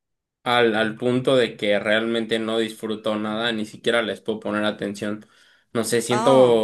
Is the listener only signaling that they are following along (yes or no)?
yes